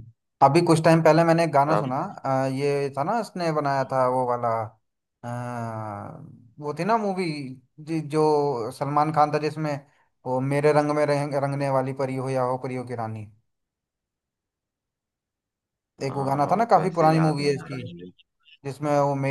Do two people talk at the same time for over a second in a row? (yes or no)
yes